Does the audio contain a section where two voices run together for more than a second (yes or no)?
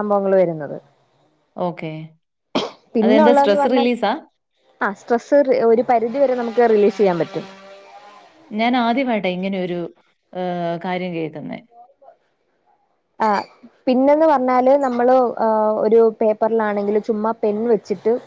no